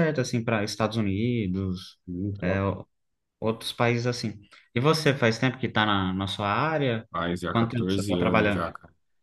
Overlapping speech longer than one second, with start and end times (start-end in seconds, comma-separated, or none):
7.5-8.7